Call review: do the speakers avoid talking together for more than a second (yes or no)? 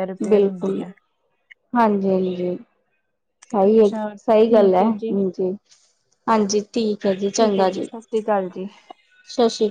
no